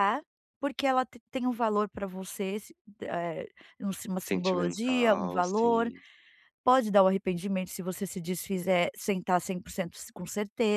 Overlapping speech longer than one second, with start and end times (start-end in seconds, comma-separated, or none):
4.3-5.9